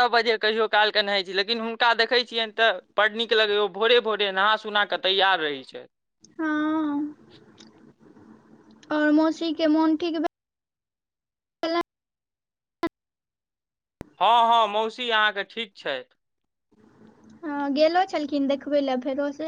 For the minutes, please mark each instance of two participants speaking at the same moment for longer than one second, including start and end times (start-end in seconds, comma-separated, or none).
none